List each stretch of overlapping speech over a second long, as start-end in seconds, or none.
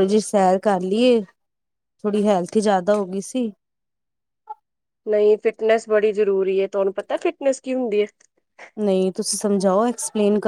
none